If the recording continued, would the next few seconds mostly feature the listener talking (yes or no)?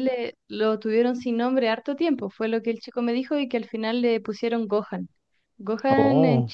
no